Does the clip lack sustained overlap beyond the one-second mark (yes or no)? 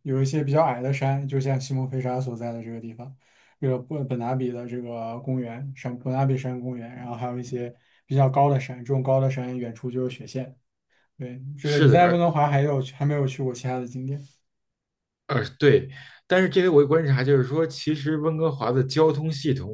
yes